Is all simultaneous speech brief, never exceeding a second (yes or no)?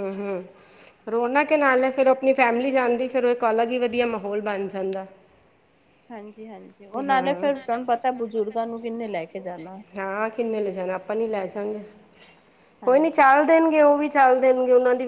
yes